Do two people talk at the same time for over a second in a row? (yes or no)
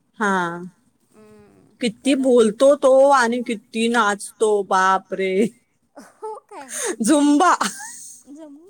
no